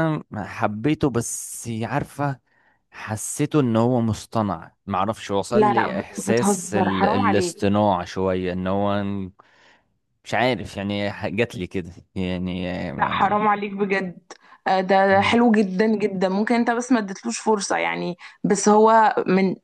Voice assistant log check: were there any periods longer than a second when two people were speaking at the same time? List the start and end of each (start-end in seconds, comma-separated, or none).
5.5-7.7